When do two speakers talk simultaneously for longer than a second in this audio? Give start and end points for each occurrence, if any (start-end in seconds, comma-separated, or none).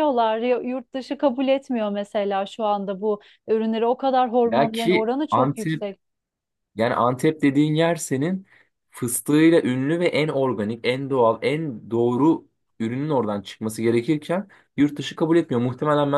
4.4-5.8